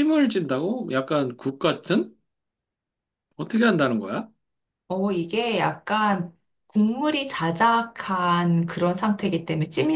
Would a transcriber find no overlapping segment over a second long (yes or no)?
yes